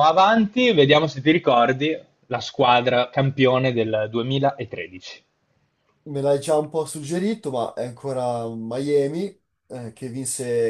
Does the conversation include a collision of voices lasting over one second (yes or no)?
no